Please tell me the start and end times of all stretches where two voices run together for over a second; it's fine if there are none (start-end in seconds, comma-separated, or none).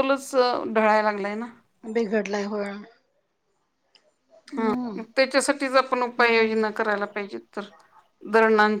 none